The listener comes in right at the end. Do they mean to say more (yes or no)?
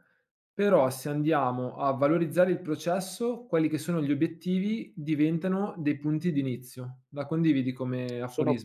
yes